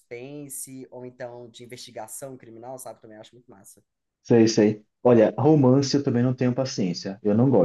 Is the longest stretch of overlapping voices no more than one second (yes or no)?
yes